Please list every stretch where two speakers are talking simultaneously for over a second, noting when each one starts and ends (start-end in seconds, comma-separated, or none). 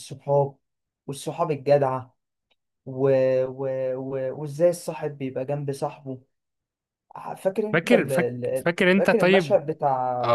7.7-9.6